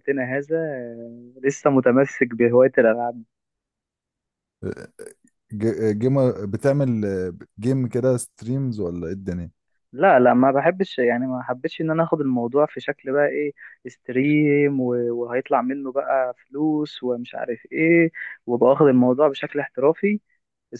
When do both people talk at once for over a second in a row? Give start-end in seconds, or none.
none